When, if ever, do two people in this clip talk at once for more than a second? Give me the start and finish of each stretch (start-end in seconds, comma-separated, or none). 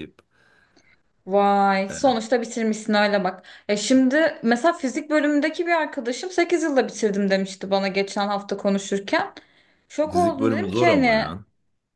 10.1-11.3